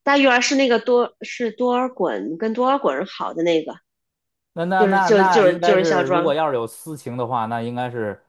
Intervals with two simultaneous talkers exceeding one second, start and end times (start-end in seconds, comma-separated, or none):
4.8-6.3